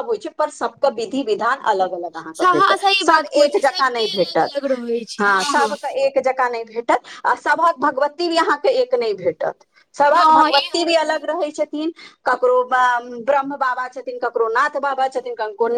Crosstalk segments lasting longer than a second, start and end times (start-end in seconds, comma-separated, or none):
2.4-4.6